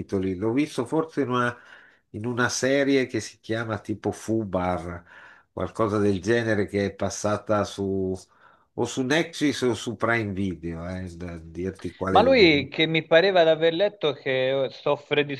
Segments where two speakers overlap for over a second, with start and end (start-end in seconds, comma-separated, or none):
none